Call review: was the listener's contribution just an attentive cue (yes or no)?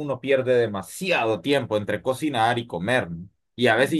yes